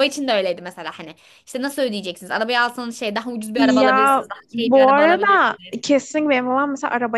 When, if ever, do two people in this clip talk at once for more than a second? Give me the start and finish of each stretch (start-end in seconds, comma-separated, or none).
3.5-5.7